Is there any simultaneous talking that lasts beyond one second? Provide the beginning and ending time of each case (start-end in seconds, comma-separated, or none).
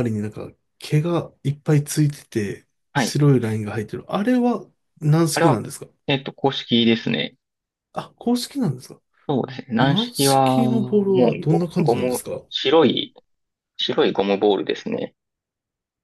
9.8-12.4